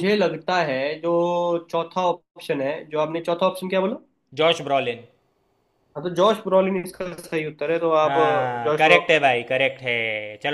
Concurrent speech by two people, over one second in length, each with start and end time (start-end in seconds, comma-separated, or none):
8.1-9.3